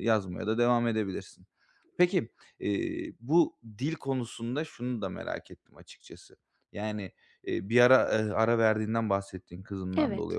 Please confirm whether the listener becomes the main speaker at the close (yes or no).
no